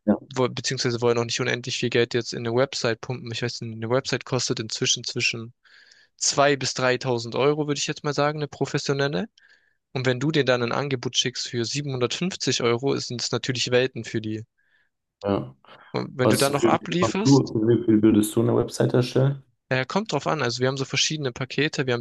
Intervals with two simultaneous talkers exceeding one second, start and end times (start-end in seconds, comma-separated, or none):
16.2-17.5